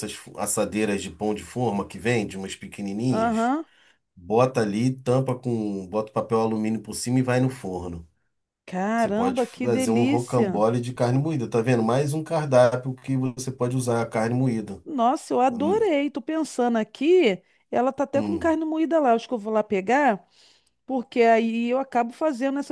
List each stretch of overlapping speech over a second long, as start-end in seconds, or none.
9.0-10.6